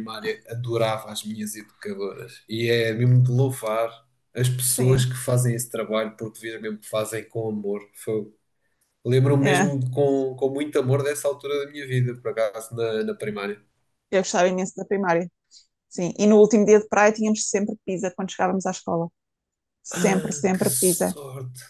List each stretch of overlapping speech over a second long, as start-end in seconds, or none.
19.9-21.2